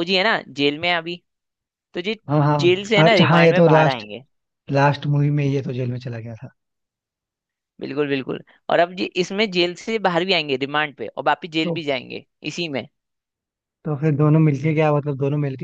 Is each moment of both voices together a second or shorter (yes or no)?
no